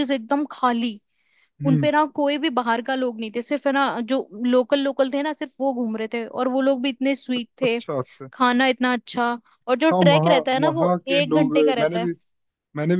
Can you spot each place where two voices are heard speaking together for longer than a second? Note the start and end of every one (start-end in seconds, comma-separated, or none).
9.9-12.1